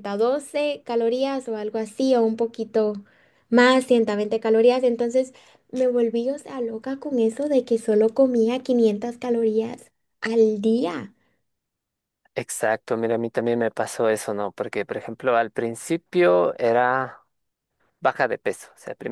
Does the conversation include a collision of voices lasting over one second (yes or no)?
no